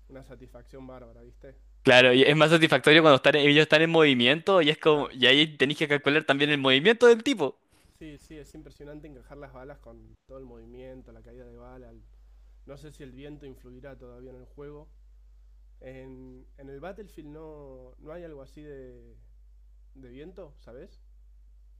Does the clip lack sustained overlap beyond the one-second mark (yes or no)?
yes